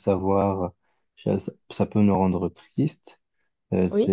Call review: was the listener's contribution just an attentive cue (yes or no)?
yes